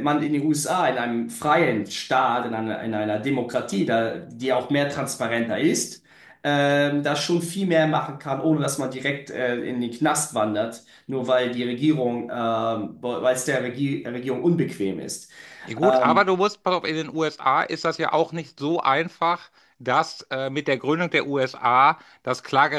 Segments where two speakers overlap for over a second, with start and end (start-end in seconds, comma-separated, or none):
none